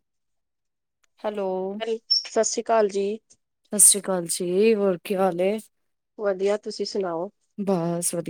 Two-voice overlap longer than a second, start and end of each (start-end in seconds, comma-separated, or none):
none